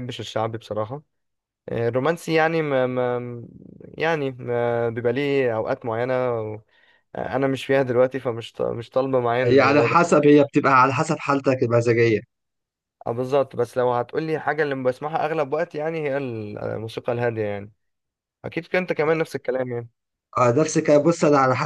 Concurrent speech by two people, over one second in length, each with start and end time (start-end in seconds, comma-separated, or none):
none